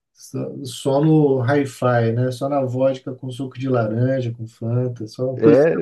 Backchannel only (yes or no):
no